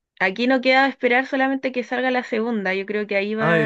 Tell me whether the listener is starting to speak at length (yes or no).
no